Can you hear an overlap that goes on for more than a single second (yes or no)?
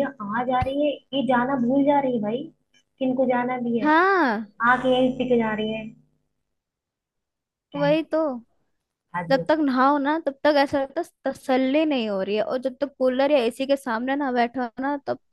no